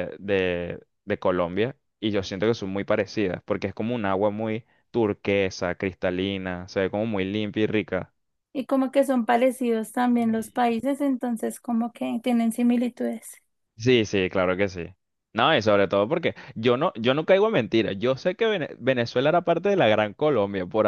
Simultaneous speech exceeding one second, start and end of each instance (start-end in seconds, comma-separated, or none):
none